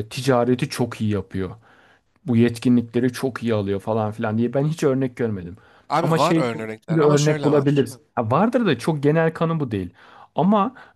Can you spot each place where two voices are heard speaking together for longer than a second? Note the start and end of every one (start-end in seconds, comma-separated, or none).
6.0-7.9